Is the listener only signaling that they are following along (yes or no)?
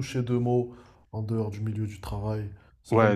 no